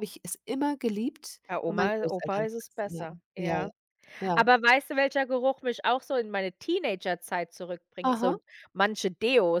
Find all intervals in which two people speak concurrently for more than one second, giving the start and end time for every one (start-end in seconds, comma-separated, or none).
1.5-3.7